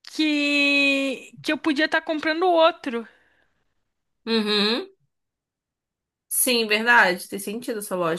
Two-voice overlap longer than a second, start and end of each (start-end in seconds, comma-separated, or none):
none